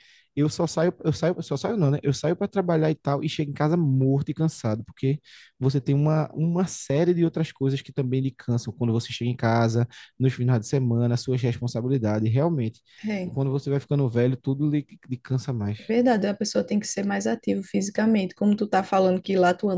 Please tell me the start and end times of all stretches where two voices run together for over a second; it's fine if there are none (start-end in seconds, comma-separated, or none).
none